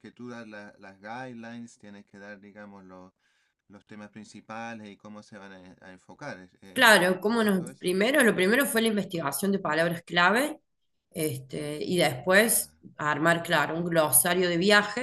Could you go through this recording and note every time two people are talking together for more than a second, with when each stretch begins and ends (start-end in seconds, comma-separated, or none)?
6.7-8.0